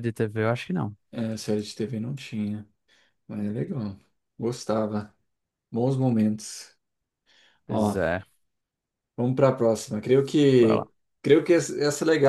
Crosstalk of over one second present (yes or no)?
no